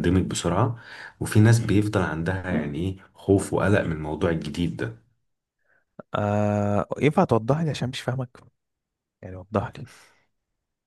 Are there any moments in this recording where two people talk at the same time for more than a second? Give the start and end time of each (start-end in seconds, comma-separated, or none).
none